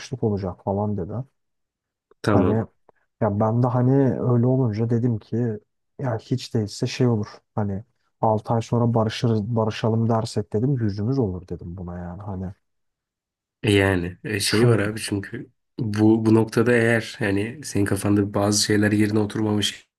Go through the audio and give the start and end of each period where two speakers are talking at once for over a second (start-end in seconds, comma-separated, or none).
none